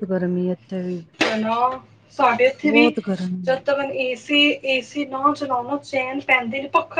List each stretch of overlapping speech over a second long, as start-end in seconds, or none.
none